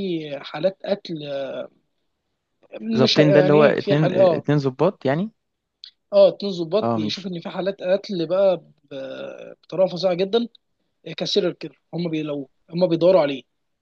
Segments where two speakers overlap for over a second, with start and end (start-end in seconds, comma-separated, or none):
3.0-4.5